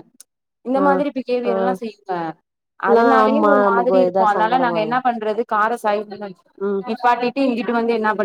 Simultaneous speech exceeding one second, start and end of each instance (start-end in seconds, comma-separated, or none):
2.9-5.0